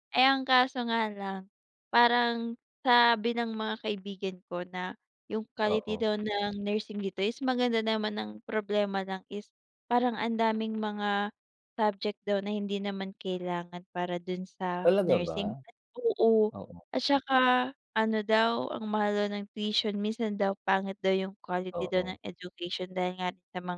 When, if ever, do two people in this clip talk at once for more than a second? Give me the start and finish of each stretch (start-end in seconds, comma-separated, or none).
none